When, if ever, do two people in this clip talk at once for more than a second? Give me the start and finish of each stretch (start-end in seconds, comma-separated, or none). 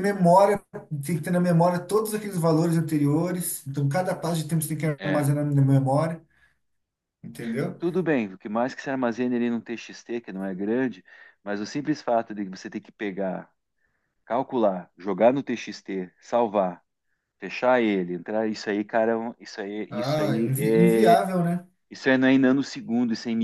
19.9-21.2